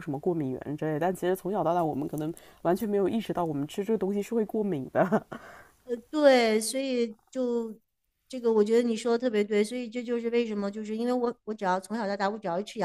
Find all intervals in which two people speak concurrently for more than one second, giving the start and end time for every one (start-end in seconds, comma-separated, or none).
none